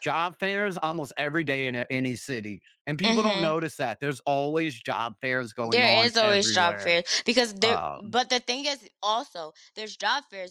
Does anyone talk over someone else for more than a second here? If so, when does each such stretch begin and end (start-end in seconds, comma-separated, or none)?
5.7-7.0